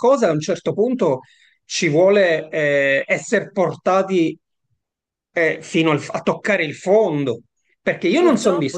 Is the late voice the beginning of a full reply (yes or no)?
no